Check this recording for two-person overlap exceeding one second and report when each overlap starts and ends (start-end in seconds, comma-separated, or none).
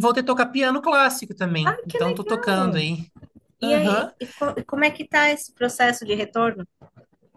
1.6-2.9